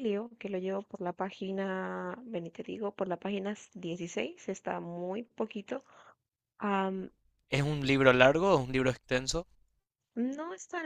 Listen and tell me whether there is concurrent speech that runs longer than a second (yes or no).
no